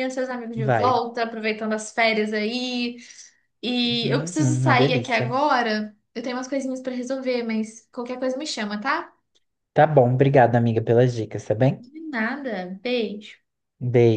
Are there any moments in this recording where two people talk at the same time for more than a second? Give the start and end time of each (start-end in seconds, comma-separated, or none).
3.8-5.4